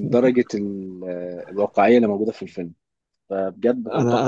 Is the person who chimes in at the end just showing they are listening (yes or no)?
no